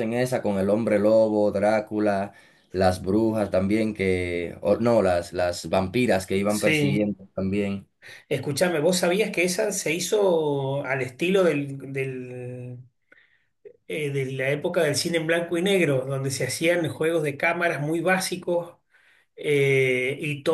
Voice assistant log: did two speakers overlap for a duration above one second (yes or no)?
no